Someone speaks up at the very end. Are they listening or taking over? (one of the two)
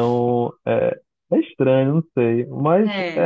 listening